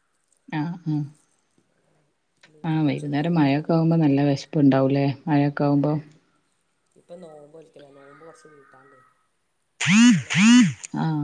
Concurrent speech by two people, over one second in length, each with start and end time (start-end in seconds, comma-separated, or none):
2.7-4.0